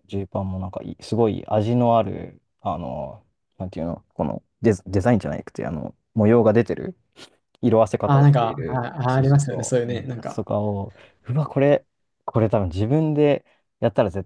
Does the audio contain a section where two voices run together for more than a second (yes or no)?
yes